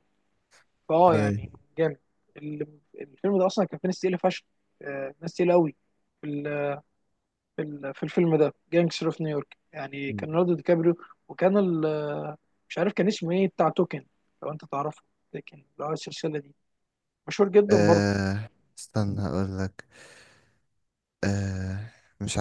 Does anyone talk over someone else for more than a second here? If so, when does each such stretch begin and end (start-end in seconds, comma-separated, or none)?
none